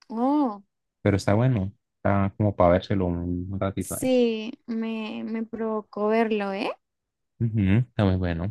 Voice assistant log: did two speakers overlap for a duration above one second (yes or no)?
no